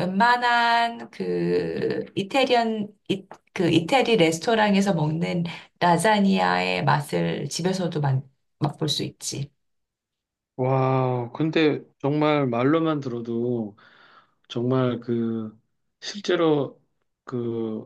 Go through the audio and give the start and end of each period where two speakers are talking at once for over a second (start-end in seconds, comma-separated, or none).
none